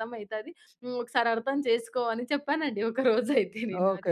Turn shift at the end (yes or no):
yes